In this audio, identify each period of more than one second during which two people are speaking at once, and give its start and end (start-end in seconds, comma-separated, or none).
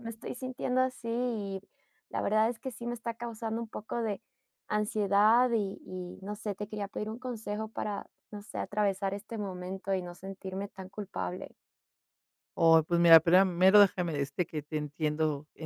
none